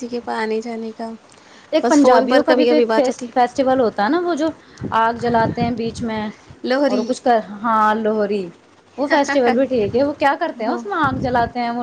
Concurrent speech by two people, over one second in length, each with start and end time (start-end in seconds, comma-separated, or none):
none